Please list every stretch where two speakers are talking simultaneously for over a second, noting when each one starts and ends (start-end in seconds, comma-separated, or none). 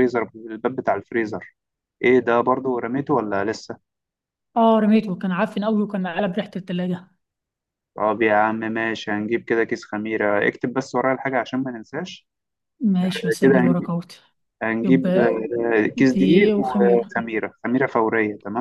15.9-17.1